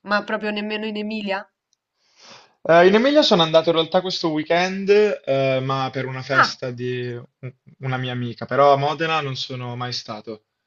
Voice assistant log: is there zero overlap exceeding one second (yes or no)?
yes